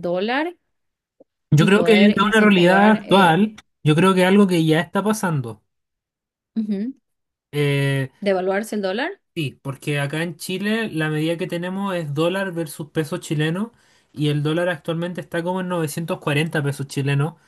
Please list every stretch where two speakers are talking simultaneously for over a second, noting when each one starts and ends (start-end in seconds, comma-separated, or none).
1.6-3.4